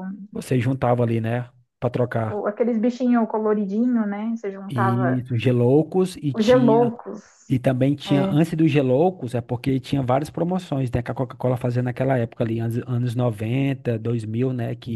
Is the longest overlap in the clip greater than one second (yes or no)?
no